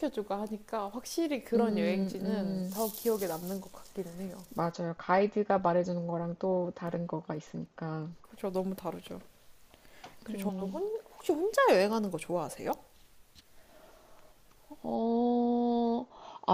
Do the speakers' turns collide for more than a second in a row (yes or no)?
yes